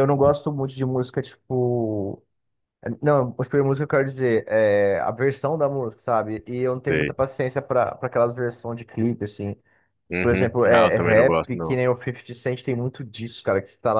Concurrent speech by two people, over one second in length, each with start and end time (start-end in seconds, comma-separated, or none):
10.2-11.8